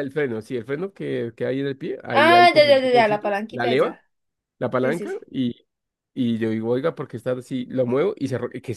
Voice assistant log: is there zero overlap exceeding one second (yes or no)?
no